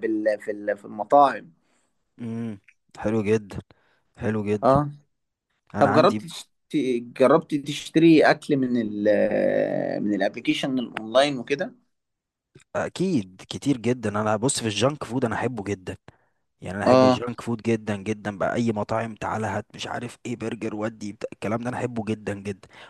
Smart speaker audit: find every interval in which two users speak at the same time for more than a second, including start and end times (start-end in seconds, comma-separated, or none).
none